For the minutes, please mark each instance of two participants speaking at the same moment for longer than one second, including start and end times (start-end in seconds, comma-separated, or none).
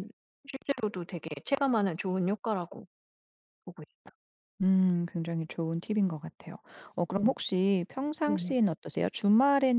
none